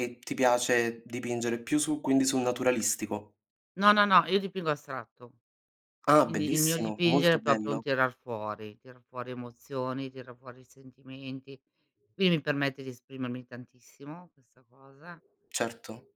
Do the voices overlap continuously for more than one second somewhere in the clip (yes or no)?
yes